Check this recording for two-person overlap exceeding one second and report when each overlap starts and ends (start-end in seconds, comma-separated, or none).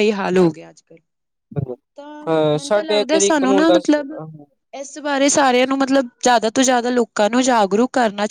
2.3-4.0